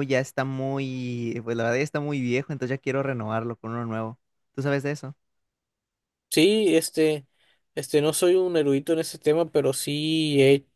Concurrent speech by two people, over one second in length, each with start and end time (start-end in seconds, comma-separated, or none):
none